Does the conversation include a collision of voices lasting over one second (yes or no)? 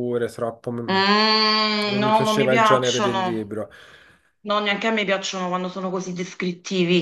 yes